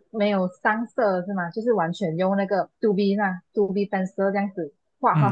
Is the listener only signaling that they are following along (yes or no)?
no